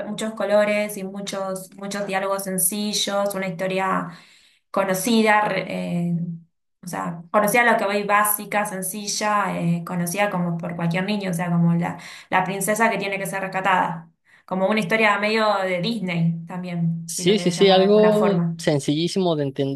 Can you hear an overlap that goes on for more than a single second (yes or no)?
yes